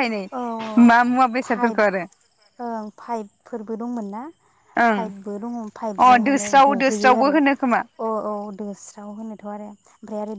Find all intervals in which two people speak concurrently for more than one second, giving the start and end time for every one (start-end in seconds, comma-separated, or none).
6.0-7.8